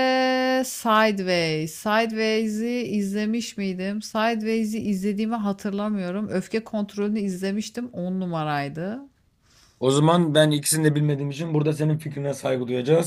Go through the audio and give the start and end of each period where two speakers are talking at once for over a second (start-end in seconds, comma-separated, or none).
none